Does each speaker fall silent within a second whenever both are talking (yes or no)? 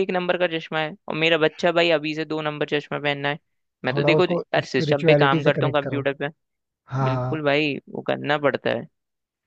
no